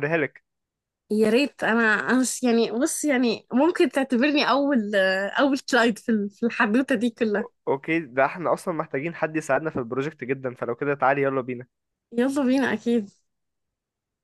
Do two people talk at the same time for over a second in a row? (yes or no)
no